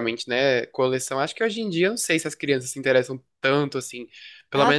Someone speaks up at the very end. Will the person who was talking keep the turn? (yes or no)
yes